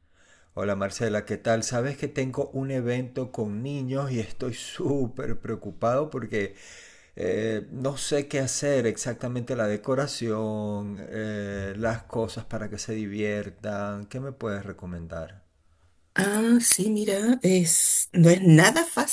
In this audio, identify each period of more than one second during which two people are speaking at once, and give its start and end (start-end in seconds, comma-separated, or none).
none